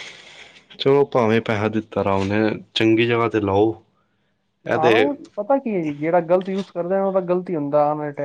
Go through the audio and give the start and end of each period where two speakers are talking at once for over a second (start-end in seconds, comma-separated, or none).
none